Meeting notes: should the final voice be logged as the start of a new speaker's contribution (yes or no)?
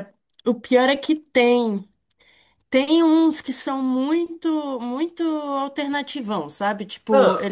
no